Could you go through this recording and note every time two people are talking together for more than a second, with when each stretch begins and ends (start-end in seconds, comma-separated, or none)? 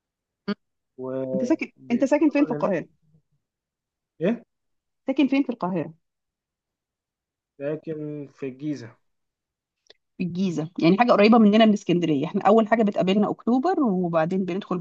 1.3-2.7